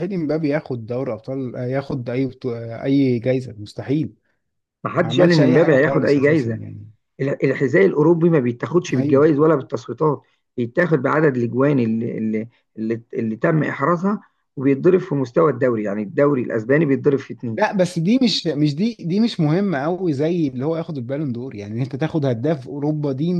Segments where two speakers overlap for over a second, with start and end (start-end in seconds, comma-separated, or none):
5.0-6.6